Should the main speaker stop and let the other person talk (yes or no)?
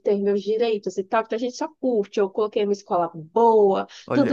no